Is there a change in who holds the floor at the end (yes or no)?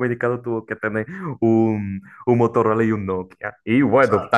no